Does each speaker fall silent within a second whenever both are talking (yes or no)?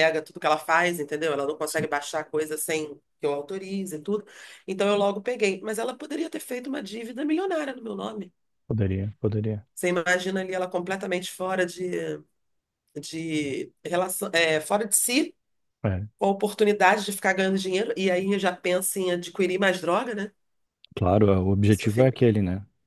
yes